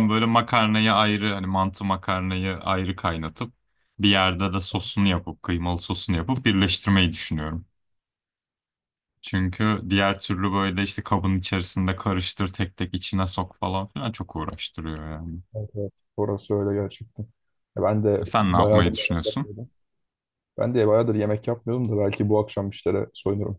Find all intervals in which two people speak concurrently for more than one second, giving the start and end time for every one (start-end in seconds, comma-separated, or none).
18.2-19.5